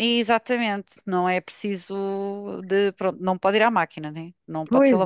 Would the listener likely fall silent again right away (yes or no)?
no